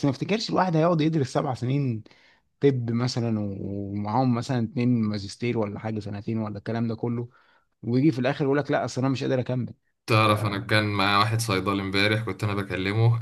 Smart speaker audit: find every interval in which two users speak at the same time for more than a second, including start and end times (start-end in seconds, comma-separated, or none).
none